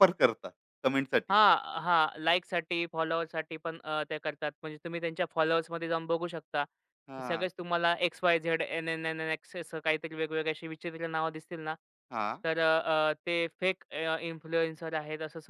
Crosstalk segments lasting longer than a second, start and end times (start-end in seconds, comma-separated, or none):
none